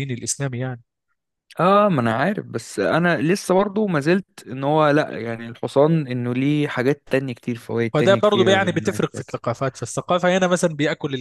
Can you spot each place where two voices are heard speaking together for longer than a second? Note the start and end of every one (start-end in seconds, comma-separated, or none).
7.9-9.4